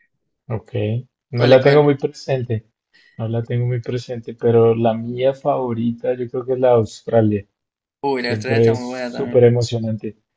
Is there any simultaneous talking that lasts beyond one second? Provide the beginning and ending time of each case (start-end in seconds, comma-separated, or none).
8.2-9.4